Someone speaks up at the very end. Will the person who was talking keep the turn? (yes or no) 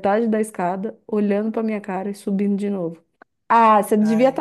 yes